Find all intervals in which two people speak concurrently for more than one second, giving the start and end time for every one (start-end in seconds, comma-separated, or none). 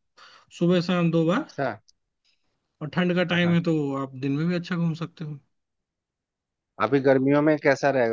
none